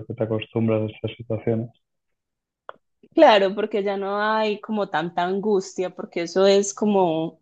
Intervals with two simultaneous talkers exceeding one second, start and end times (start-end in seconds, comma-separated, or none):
none